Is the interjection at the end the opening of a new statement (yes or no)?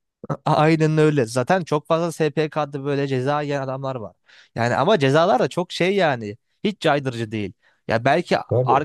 no